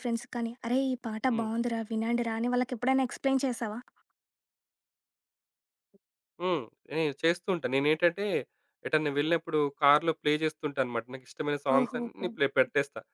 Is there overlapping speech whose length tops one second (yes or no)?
no